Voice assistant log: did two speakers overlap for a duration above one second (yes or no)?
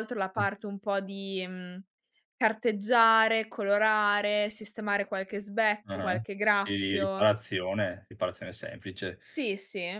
yes